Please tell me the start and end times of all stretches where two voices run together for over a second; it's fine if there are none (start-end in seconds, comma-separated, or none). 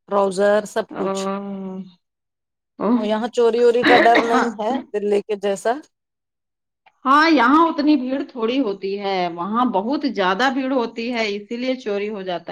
none